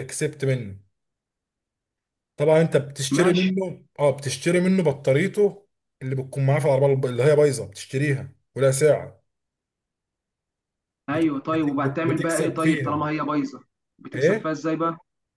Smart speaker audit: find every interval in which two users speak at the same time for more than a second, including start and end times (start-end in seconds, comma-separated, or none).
11.1-13.1